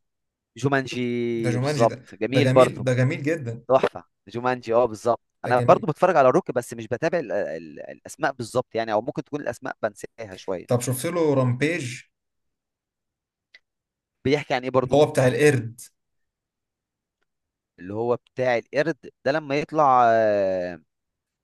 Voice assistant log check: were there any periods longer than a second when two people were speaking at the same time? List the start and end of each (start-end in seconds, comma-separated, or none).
1.3-2.8